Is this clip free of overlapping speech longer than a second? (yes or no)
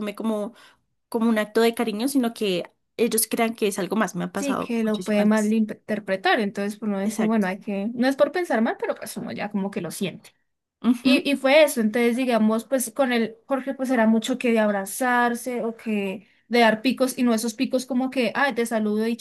no